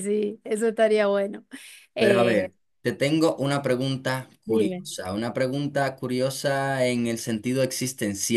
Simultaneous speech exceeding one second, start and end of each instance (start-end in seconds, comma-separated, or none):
none